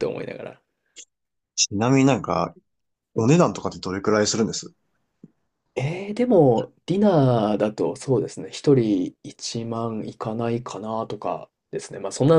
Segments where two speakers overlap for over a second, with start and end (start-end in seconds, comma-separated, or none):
none